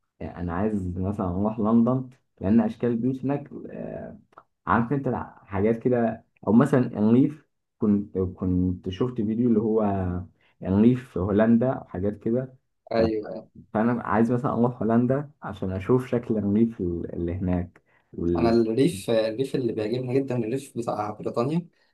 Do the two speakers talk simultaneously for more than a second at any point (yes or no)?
no